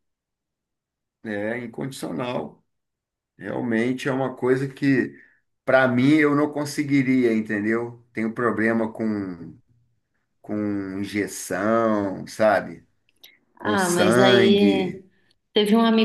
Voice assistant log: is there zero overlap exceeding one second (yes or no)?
no